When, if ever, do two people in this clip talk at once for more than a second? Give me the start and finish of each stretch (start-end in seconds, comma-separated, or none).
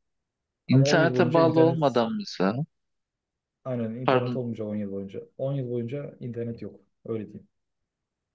0.7-2.0